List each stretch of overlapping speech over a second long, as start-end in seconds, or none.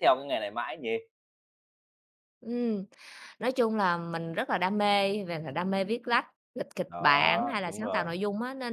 6.9-8.1